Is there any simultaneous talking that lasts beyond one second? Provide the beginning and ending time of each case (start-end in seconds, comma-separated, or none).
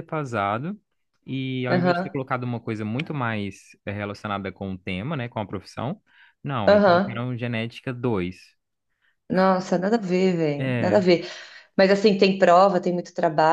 none